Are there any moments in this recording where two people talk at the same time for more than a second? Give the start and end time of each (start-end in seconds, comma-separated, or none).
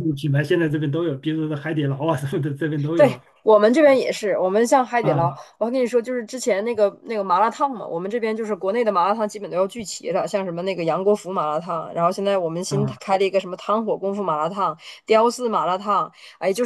none